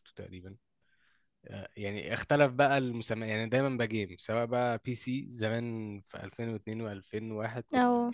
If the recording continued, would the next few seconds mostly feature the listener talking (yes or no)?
no